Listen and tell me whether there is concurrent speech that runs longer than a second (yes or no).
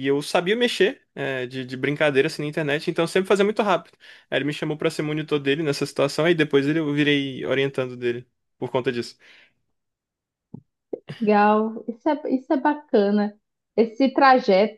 no